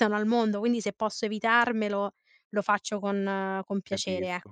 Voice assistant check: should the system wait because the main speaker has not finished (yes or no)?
no